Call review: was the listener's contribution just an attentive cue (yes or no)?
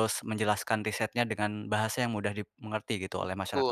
no